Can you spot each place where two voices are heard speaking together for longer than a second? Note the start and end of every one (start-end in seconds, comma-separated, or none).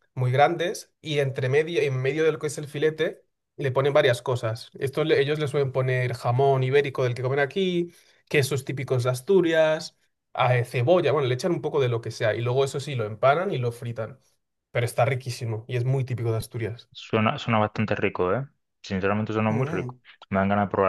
none